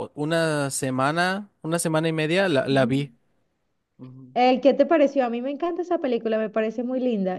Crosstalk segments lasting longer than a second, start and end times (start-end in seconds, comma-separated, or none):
none